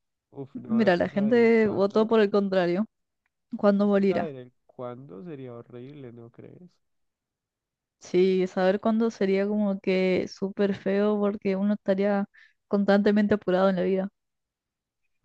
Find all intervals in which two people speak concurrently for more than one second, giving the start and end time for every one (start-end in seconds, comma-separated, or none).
0.7-2.1